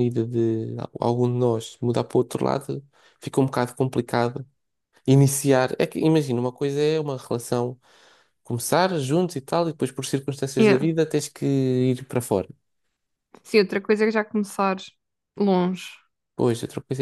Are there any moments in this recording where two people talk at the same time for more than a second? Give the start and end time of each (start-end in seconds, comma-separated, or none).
none